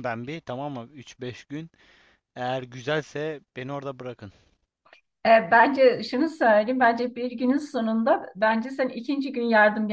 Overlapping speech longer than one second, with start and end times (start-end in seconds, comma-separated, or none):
none